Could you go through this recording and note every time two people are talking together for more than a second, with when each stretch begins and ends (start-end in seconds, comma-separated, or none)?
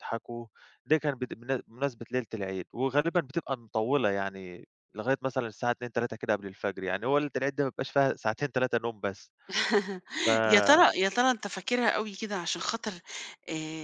none